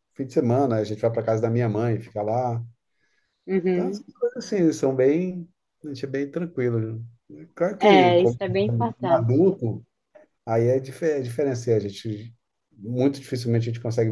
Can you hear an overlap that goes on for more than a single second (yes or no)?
no